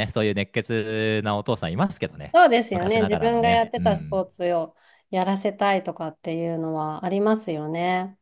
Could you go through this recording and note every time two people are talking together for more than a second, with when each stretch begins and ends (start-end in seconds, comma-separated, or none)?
2.3-4.2